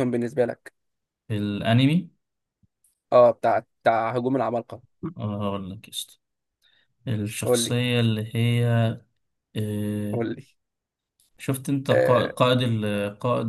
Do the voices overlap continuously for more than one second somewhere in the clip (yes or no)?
no